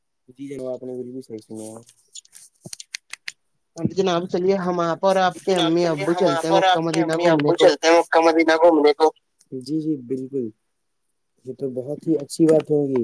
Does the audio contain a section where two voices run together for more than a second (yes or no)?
yes